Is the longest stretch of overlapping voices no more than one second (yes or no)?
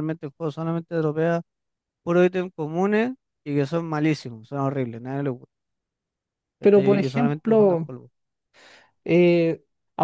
no